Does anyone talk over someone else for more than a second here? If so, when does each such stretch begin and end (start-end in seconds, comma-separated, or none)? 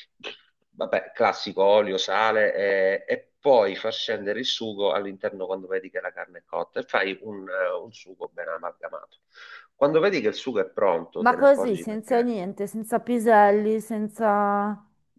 11.2-12.4